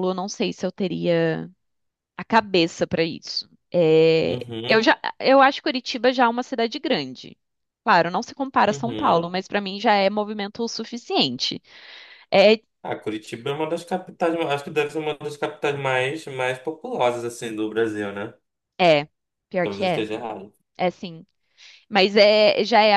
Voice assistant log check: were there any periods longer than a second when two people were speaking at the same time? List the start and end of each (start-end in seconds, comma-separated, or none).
none